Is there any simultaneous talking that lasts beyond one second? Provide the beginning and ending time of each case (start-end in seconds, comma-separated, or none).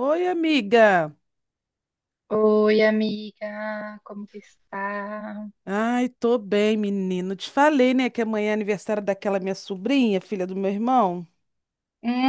none